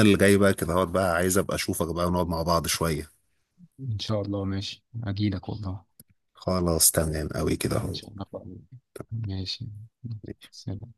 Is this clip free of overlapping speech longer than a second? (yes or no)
yes